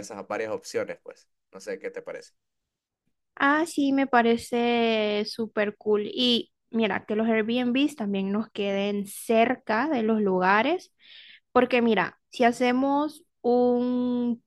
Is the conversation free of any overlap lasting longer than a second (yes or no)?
yes